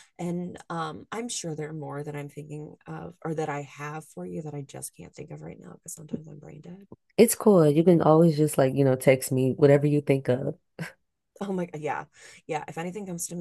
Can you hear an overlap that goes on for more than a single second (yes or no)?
no